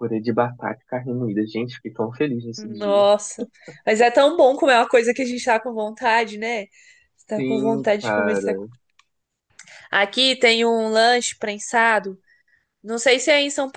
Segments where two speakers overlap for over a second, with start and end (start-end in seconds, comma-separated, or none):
7.3-8.6